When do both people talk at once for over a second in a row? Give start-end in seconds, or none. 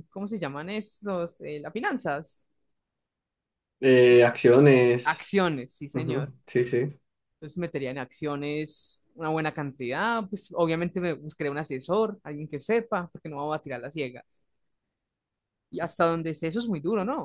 none